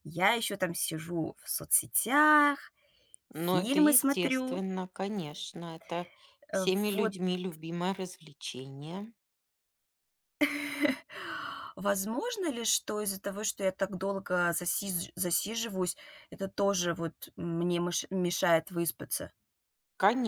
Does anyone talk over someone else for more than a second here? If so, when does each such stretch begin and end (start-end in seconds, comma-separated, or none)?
3.3-4.6